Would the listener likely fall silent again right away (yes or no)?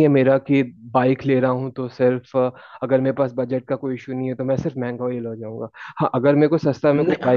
yes